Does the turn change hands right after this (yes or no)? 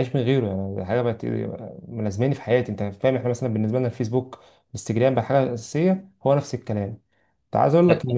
no